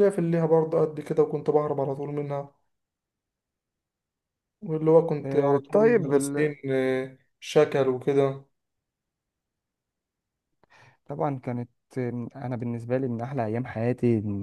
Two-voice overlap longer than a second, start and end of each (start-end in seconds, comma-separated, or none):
5.2-6.5